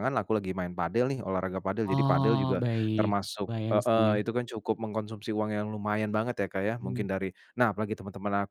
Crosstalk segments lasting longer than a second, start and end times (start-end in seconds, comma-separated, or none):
1.8-4.2